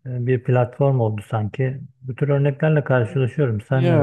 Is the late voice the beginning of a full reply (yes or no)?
yes